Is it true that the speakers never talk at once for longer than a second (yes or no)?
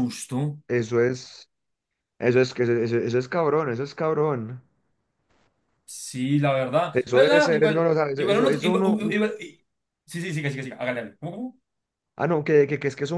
no